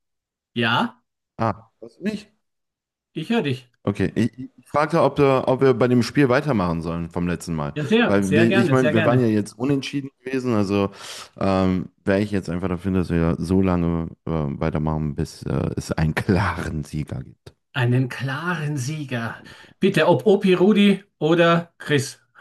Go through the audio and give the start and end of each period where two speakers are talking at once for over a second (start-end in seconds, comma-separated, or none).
7.7-9.3